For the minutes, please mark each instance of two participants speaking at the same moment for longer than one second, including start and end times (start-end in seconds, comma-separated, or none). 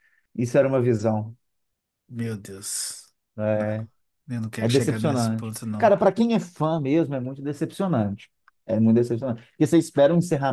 4.6-5.9